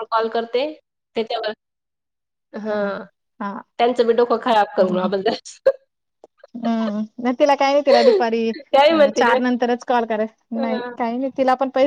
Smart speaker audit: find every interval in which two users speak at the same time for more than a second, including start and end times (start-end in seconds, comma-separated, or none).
none